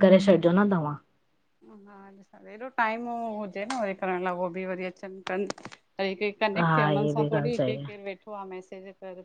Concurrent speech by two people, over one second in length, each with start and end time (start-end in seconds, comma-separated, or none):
6.7-8.0